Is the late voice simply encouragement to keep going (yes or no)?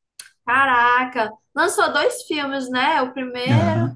yes